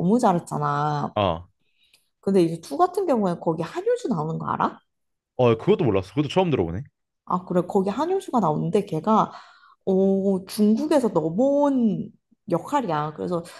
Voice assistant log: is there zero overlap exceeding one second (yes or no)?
yes